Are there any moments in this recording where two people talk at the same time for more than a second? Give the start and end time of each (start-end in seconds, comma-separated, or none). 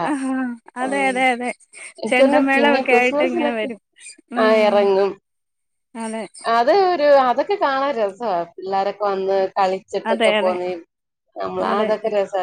2.1-3.7